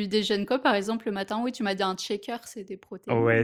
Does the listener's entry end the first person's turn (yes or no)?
yes